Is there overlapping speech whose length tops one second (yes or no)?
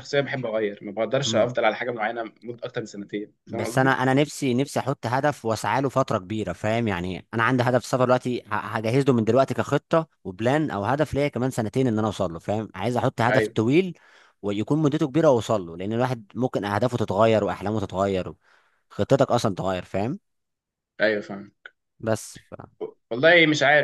no